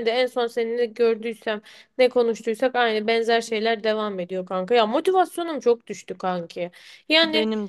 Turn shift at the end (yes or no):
no